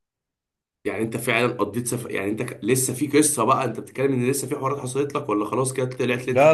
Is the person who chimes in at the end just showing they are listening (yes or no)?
no